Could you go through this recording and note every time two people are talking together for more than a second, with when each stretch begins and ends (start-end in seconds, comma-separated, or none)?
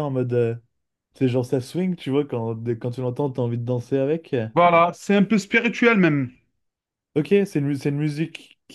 none